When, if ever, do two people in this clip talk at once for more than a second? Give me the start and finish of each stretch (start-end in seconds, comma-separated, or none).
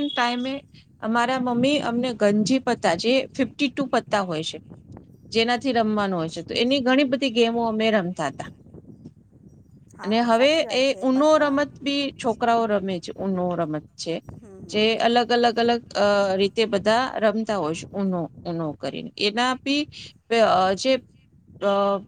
10.0-12.1